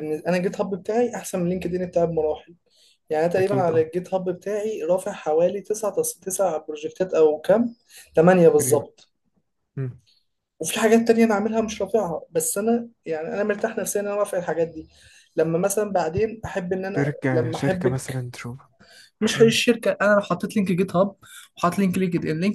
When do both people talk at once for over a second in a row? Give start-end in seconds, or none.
17.0-18.3